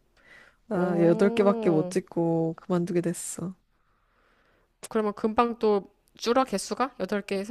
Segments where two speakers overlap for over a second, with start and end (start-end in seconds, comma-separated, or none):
0.7-1.9